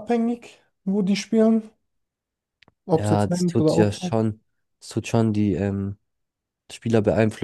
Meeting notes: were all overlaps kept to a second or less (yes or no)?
no